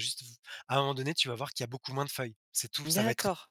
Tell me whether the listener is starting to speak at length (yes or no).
yes